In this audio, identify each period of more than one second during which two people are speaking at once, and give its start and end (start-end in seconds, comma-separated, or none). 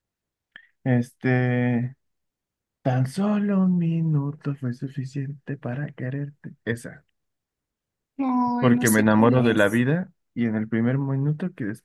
8.6-9.8